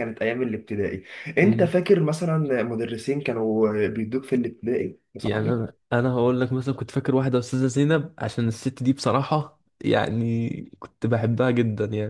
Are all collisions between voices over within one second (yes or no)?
yes